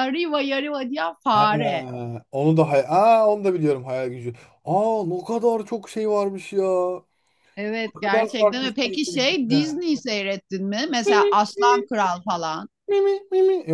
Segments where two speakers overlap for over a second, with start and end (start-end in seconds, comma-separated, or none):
8.0-9.8